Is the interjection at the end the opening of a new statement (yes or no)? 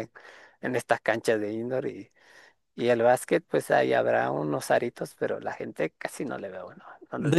yes